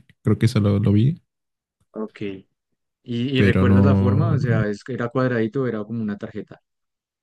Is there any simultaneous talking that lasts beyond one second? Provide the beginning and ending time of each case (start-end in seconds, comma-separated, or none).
3.4-4.6